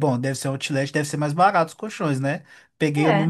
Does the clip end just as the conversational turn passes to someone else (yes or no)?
no